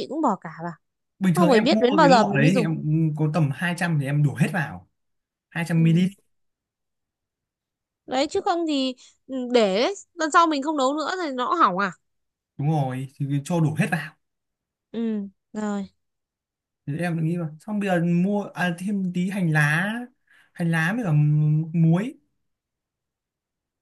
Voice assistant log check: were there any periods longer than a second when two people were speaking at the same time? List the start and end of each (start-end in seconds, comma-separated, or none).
1.4-2.7